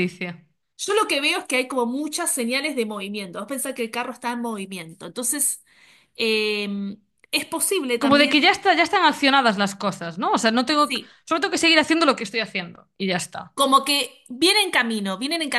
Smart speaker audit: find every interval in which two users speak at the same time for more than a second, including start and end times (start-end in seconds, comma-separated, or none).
none